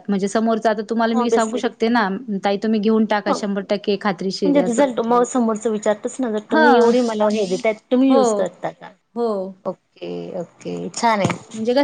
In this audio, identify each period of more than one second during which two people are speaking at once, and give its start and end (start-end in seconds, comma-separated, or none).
none